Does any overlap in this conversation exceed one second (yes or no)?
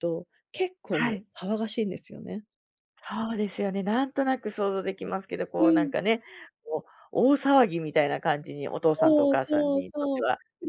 yes